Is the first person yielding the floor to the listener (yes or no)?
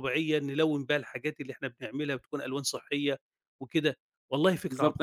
yes